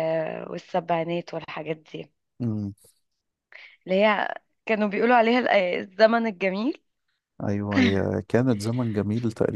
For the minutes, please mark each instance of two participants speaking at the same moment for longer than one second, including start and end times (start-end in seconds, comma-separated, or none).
none